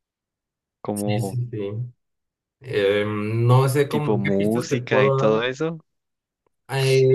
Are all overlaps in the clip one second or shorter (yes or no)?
no